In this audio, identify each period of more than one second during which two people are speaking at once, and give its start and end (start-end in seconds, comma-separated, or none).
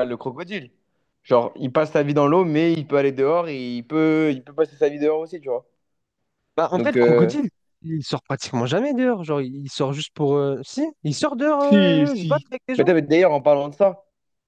11.6-12.9